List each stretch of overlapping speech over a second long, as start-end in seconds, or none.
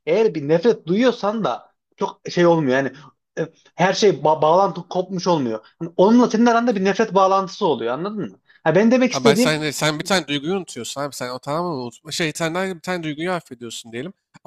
none